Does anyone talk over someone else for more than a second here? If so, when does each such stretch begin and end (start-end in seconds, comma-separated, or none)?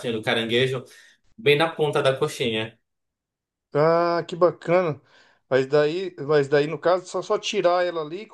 none